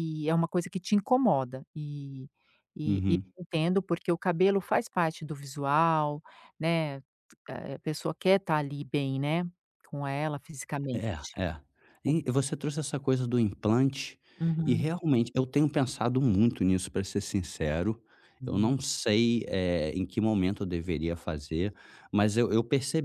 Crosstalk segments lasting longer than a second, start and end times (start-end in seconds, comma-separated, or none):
none